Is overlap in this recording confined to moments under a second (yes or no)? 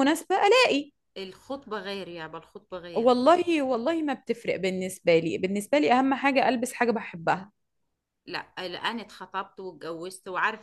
yes